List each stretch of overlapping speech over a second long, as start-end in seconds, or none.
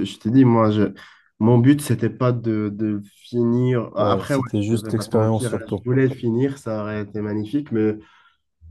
4.0-5.8